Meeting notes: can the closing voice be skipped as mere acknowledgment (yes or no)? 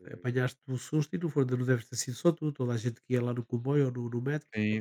no